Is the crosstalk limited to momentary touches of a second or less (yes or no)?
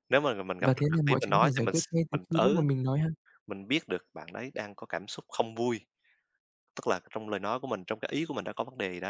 no